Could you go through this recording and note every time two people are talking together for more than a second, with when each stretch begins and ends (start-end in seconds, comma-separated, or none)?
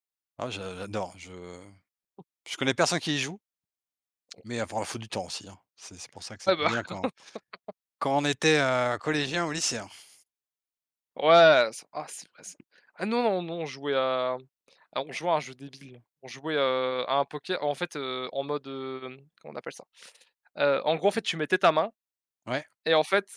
none